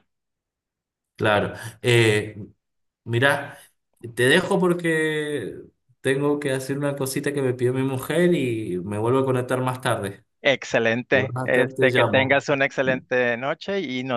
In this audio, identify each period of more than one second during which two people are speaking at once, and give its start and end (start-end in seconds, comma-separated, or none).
11.1-12.4